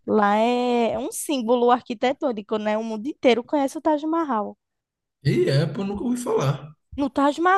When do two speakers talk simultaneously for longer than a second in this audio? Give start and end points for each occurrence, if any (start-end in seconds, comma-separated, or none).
none